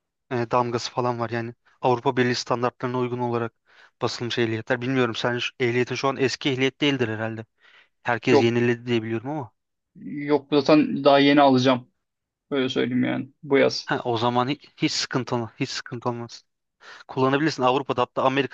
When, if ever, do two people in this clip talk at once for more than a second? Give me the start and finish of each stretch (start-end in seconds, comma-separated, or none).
none